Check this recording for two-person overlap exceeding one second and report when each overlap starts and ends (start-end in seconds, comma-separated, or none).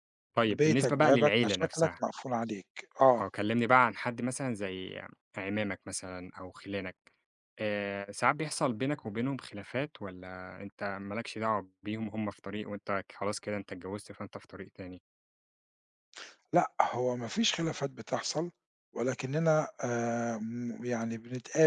0.5-1.9